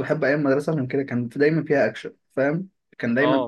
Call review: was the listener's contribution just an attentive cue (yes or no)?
yes